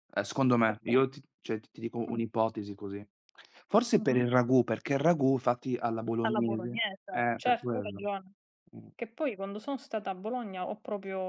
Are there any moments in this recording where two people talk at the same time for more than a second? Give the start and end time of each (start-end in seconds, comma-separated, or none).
6.2-8.0